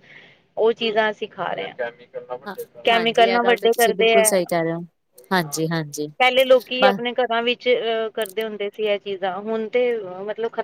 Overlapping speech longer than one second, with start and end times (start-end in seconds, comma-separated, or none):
2.9-4.3